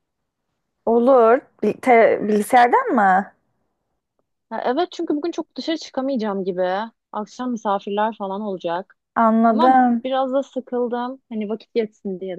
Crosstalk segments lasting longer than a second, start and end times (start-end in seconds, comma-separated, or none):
none